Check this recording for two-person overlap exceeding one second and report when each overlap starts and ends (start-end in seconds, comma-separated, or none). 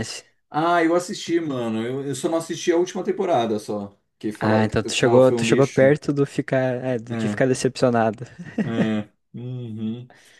4.4-5.9